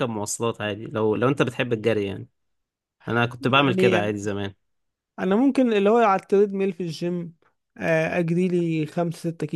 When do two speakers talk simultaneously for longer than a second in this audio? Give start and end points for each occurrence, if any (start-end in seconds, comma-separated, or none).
none